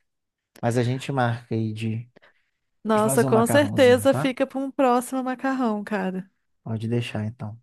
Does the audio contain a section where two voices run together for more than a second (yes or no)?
yes